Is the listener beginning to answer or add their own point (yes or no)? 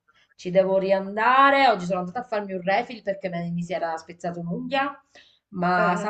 no